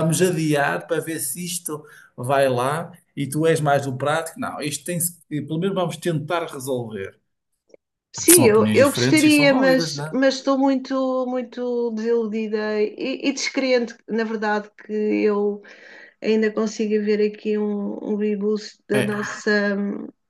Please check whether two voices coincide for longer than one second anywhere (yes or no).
yes